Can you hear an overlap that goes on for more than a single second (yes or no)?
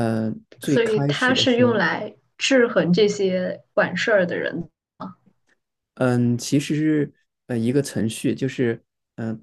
yes